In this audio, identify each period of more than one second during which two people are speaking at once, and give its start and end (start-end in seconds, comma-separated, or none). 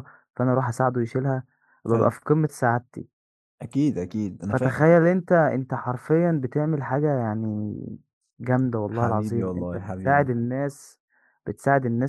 8.9-10.3